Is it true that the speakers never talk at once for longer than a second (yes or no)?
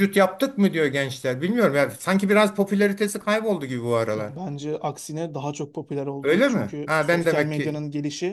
no